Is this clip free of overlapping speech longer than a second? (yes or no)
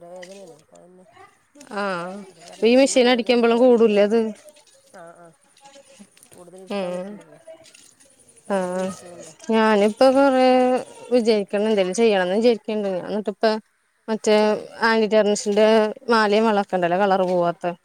no